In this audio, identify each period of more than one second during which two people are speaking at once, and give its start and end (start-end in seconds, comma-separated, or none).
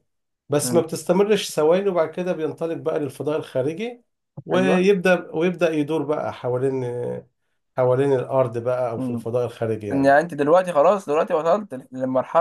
none